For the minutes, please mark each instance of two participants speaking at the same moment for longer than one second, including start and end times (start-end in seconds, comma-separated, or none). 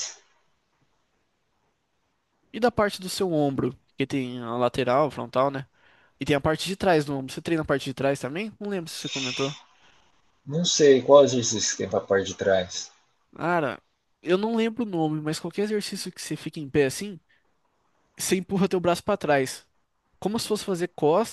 none